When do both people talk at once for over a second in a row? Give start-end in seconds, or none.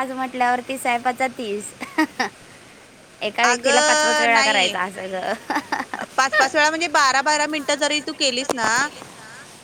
3.5-4.7